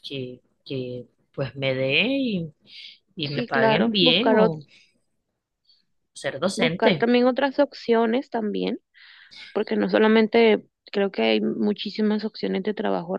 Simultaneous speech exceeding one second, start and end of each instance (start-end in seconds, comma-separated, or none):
3.2-4.6